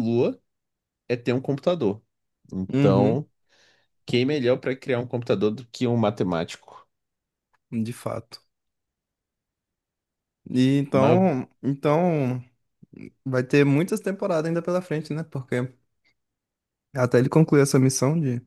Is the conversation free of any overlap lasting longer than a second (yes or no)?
yes